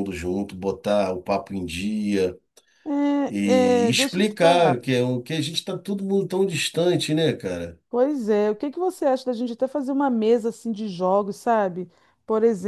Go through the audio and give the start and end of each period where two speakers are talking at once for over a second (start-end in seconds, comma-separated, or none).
3.4-4.8